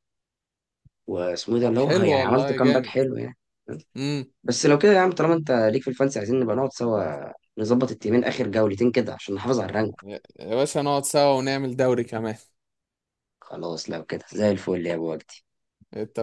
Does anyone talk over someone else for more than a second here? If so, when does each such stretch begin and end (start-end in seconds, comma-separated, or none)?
1.6-2.9